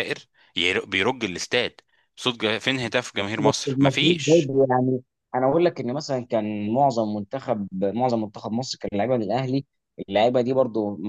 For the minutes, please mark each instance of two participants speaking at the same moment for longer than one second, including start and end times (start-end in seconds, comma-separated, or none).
3.2-4.5